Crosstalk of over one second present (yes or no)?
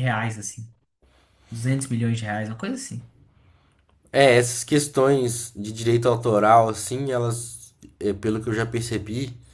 no